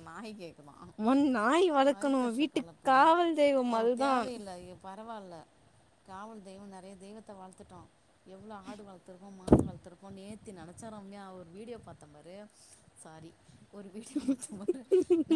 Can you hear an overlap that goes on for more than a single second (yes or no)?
yes